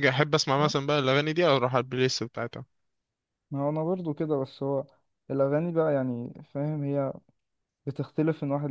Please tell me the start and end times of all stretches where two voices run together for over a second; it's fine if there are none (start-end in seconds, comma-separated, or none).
none